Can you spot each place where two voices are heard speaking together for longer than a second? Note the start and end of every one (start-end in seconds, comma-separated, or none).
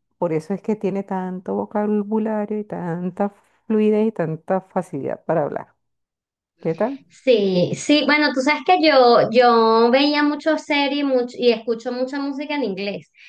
none